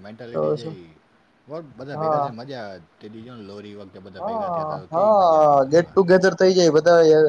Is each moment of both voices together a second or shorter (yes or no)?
no